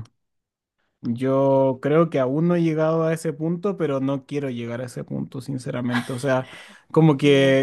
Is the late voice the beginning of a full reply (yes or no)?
no